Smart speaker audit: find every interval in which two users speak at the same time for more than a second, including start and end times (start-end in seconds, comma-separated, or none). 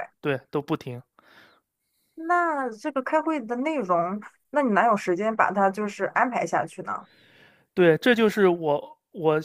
none